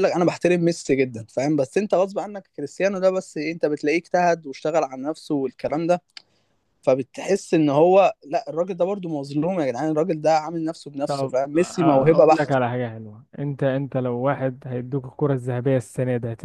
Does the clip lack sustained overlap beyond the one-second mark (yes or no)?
no